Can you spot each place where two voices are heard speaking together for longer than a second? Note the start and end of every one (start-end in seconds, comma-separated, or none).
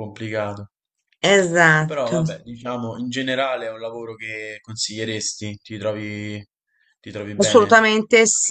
none